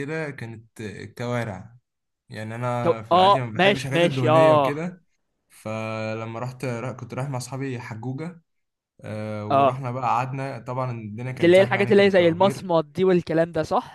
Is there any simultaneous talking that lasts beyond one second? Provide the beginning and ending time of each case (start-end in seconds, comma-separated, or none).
2.8-4.9, 11.4-12.7